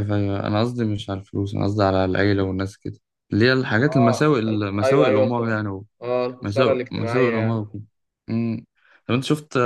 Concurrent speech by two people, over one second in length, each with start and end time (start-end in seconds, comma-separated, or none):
3.8-5.4, 6.4-7.8